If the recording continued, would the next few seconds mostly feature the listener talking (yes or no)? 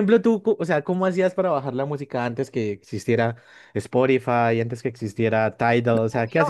yes